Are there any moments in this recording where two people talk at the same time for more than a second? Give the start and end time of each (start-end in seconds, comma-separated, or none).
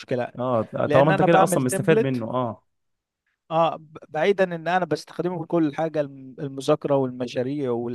0.8-2.2